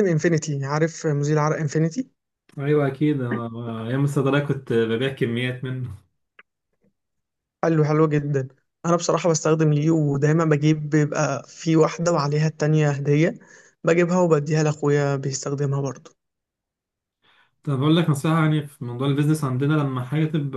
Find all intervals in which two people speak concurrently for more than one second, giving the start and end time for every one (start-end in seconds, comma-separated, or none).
none